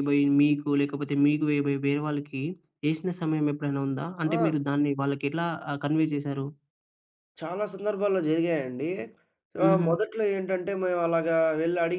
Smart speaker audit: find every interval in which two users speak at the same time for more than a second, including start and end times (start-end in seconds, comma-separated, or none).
none